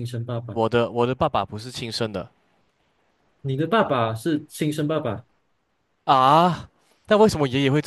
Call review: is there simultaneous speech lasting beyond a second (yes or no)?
no